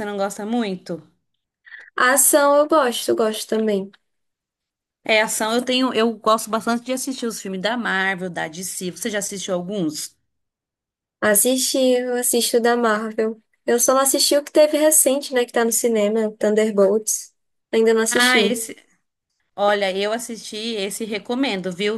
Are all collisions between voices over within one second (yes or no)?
yes